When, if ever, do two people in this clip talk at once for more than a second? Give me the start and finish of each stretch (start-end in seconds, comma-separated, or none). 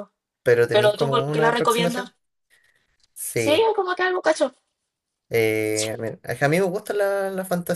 0.7-2.1